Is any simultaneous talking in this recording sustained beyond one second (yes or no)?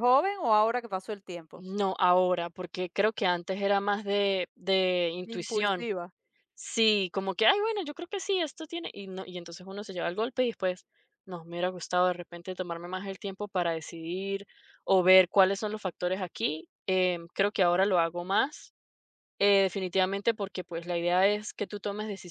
no